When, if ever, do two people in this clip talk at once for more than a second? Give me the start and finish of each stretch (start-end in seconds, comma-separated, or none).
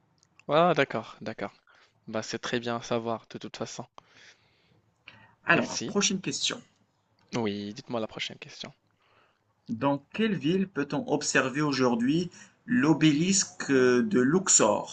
none